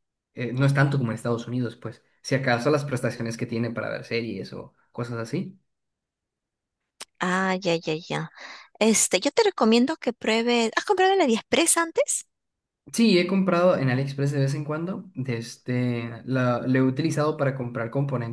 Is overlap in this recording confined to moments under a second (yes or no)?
yes